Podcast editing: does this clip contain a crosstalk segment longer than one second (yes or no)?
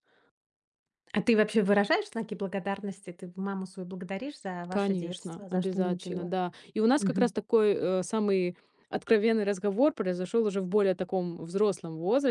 yes